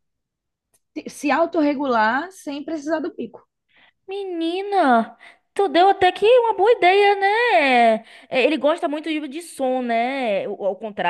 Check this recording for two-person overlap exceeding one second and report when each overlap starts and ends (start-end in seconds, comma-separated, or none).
none